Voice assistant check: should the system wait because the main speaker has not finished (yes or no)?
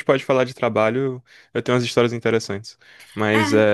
yes